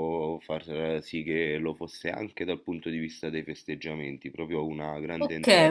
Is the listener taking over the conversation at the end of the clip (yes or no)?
yes